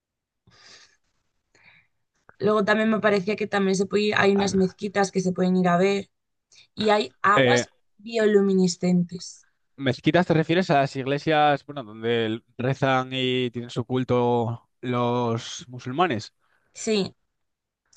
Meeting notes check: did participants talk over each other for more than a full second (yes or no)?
no